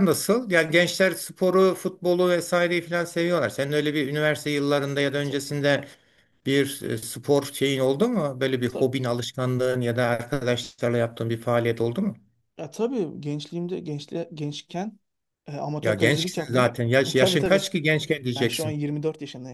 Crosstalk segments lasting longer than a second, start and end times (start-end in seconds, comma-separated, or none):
15.8-17.7